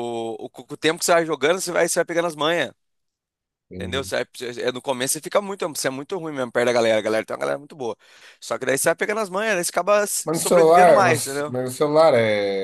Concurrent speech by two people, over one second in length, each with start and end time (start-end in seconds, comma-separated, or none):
10.2-11.6